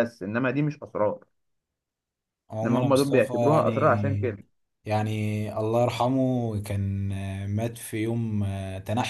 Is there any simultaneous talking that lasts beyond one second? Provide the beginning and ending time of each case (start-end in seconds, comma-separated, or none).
2.6-4.3